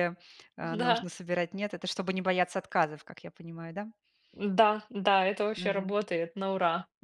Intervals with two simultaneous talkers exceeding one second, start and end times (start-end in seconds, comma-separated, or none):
none